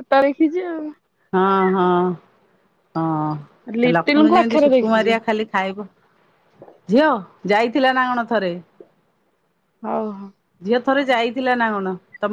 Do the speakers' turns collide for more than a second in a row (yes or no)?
yes